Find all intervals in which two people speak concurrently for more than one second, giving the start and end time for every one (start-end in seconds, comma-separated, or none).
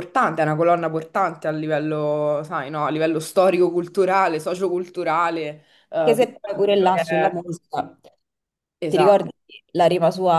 5.9-7.4